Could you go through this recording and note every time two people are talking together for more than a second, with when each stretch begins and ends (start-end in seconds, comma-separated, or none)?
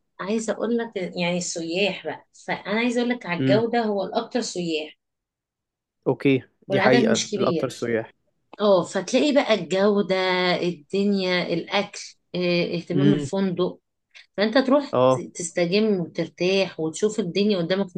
6.7-7.9